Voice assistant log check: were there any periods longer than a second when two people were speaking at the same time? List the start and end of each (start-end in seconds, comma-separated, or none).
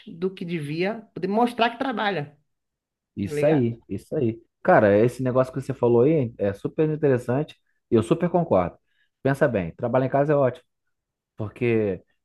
none